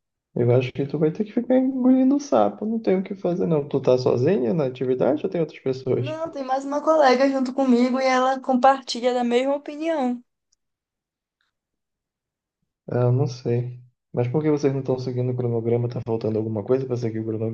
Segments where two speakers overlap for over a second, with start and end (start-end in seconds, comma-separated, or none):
none